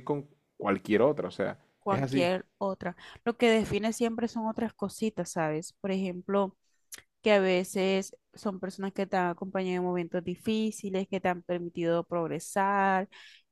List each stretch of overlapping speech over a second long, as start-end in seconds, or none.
none